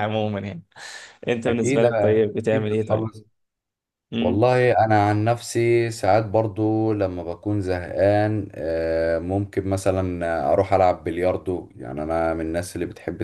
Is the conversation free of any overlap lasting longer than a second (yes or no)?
no